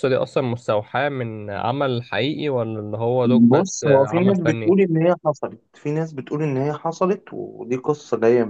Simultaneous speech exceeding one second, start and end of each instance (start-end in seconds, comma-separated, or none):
3.2-4.8